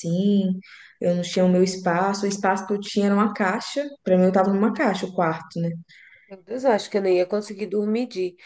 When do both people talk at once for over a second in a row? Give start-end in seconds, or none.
none